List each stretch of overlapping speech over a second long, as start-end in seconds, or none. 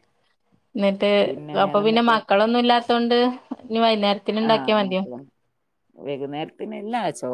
none